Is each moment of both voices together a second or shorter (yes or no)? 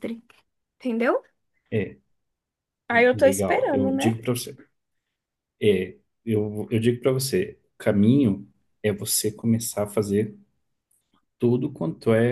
no